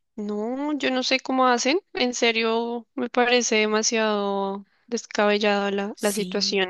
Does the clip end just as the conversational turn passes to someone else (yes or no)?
yes